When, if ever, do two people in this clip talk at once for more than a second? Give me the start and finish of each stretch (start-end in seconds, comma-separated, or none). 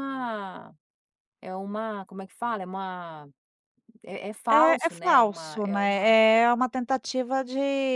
4.6-6.2